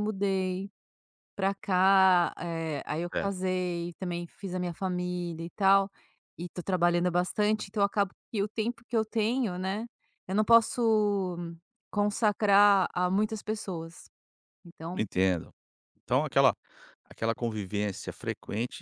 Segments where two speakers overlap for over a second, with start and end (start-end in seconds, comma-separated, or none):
none